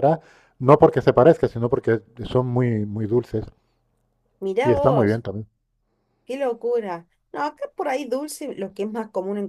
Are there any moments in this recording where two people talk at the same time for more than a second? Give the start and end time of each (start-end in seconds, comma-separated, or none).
none